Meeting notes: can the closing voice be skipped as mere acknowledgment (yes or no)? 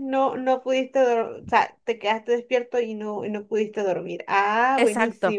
no